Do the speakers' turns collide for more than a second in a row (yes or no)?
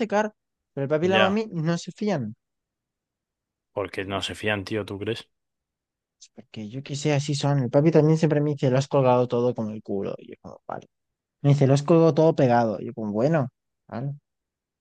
no